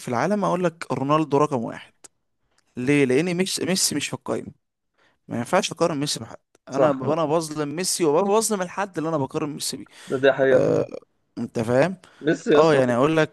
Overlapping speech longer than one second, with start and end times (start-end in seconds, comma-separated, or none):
none